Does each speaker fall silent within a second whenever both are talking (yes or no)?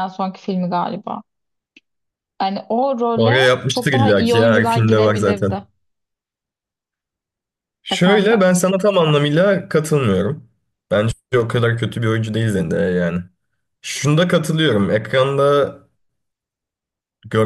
no